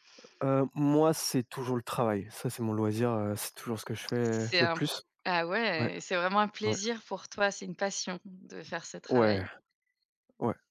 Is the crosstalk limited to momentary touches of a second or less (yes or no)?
yes